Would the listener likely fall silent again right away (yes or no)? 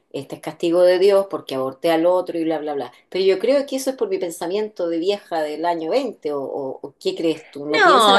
no